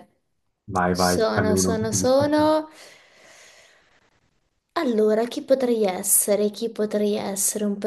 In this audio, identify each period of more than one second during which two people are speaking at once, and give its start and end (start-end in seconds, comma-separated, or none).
0.9-2.5